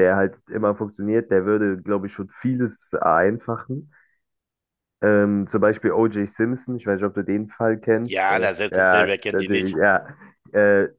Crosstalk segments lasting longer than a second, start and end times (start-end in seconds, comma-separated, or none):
8.1-9.8